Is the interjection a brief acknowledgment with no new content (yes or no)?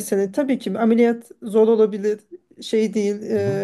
yes